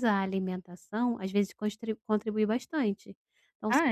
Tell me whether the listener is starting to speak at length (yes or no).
no